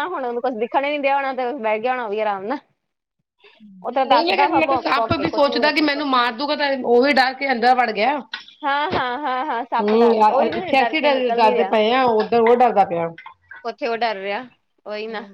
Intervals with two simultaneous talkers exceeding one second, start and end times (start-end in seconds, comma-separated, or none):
9.8-11.4